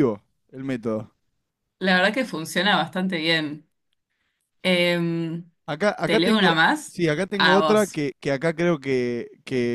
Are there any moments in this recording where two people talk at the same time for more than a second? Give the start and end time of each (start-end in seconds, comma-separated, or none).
6.0-8.0